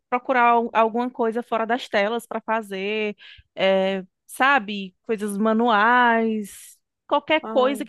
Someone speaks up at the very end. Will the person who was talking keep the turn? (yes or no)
yes